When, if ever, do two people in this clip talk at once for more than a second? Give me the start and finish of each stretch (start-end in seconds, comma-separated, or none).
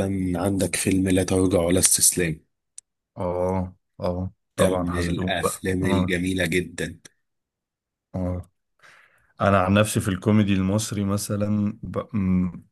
4.6-6.2